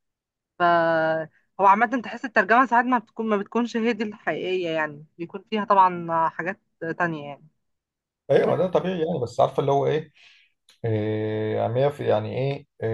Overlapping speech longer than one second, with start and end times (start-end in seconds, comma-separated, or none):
none